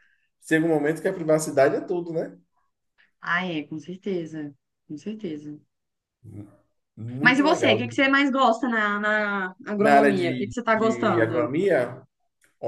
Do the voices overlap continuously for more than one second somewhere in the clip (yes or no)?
yes